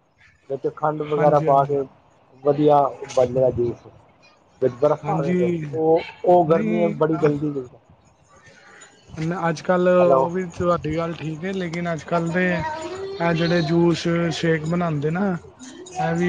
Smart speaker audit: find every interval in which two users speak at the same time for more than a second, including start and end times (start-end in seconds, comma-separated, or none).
none